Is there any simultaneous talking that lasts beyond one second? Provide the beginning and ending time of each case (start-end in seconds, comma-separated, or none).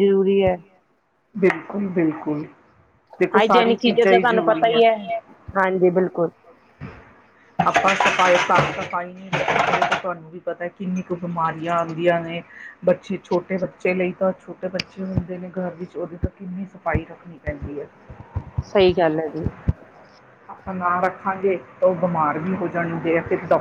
3.4-4.8